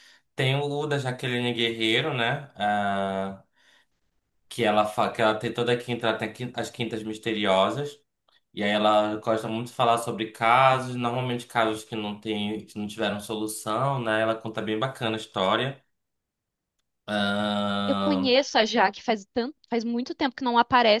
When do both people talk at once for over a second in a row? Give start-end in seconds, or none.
none